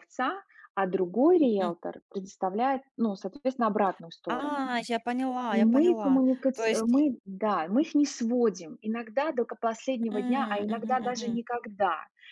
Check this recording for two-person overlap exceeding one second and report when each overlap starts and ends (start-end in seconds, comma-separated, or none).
5.5-7.0, 10.1-11.4